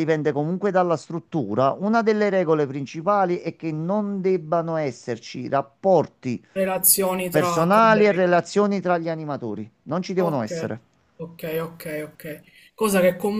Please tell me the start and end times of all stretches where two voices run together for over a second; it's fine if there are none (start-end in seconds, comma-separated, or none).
7.3-8.5